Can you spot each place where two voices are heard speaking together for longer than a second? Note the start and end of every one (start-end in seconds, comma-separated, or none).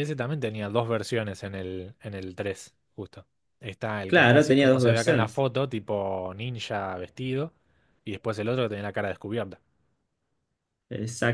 4.0-5.5